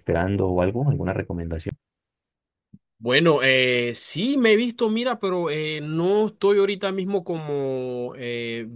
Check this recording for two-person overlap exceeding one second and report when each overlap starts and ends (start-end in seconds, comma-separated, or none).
none